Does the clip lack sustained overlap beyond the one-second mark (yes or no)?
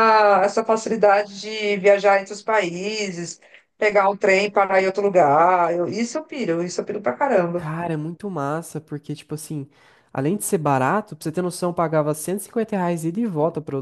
yes